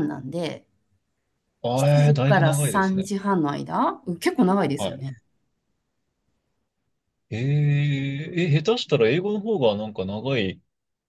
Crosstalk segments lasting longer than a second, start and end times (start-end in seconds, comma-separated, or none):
1.8-3.1